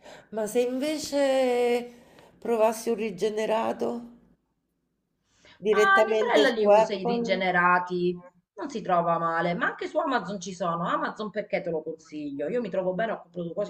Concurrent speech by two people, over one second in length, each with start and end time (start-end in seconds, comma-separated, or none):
5.7-7.5